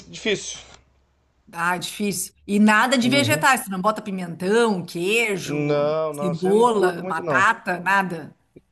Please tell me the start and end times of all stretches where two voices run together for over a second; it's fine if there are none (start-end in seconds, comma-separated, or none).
5.4-7.5